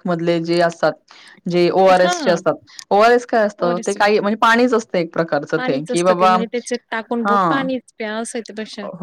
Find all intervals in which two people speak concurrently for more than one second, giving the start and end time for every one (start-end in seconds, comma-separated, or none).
5.6-7.7